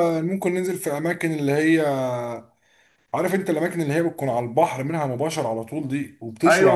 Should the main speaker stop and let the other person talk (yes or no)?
yes